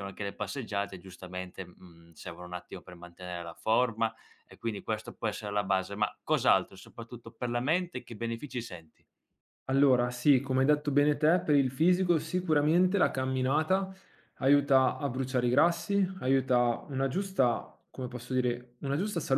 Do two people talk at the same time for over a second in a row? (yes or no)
no